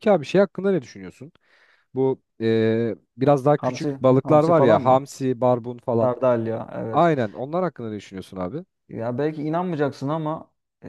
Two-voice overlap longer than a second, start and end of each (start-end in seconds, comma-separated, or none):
3.6-5.1